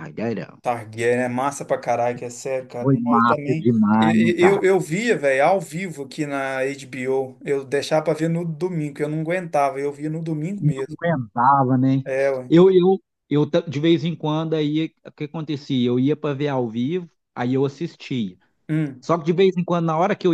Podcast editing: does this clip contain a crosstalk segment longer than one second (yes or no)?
yes